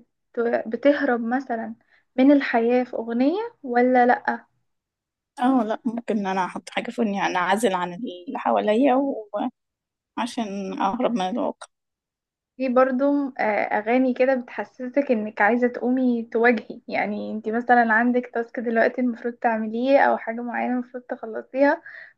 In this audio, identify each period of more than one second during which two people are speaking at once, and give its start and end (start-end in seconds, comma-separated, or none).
none